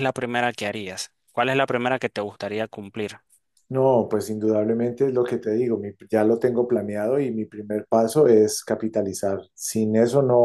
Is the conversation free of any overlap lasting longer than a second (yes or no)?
yes